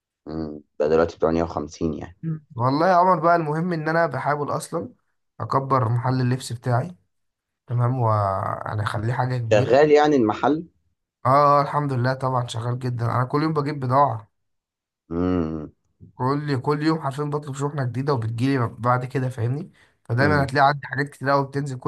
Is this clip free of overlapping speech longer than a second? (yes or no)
yes